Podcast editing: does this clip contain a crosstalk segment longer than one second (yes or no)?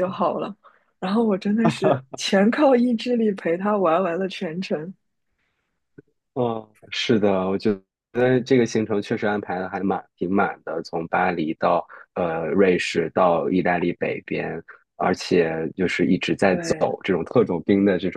no